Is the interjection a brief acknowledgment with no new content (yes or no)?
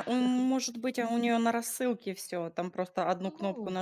no